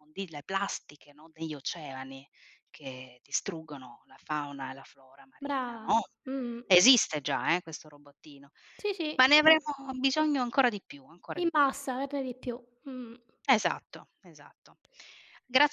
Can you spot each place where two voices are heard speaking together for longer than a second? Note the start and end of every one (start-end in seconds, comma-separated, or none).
none